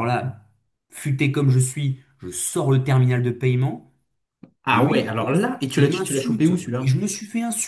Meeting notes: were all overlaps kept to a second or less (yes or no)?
no